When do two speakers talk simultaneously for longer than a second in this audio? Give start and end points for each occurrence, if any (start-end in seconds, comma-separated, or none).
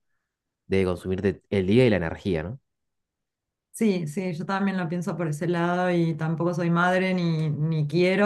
none